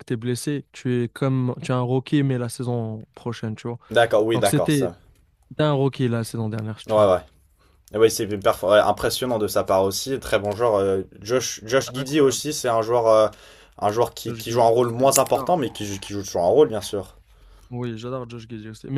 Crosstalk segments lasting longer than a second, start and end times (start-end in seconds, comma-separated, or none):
14.2-15.6